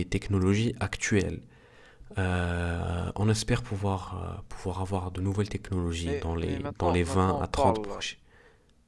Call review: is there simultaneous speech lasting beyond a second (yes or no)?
yes